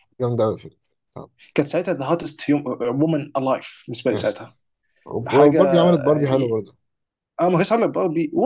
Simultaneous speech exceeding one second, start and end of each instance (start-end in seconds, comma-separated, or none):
none